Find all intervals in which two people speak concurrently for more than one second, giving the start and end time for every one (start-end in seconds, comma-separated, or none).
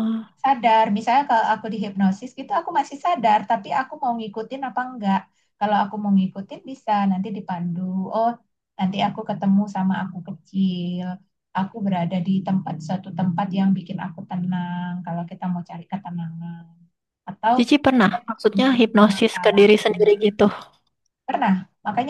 18.0-20.1